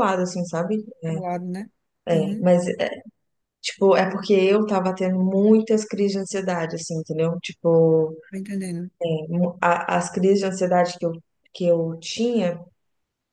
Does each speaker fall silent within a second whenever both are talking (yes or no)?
yes